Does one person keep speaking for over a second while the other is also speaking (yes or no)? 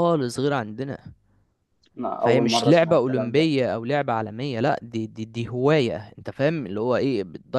yes